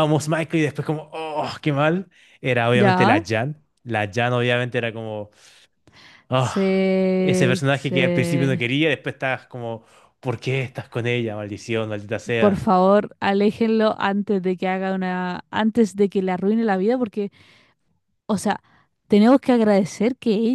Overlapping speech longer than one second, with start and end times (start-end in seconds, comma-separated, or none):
6.3-8.5